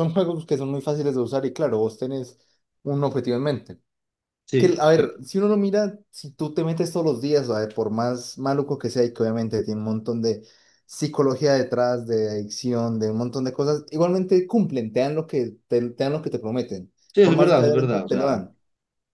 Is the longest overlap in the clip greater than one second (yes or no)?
yes